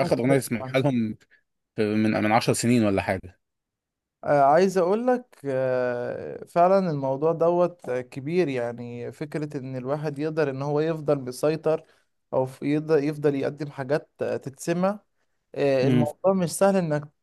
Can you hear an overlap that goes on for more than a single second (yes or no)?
no